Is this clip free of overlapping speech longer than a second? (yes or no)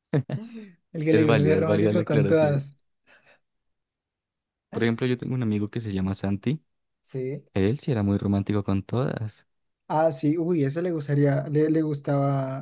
no